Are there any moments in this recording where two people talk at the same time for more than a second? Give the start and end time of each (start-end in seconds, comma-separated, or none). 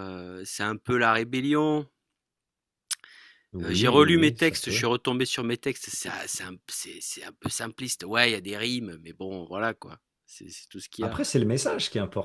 3.6-4.9